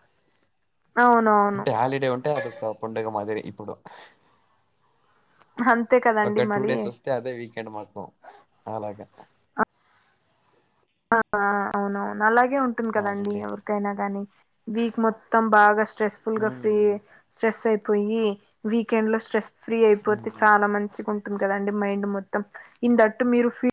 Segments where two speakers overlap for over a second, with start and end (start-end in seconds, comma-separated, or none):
none